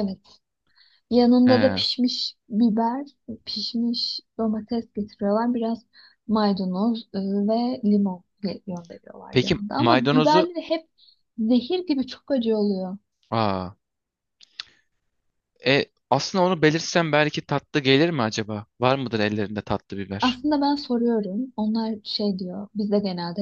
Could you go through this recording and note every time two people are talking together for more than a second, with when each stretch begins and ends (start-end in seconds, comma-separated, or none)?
9.3-10.5